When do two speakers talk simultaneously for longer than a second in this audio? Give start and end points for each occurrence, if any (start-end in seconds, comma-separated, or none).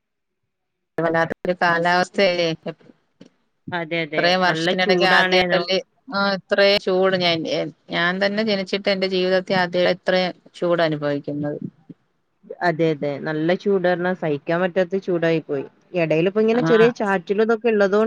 4.1-5.6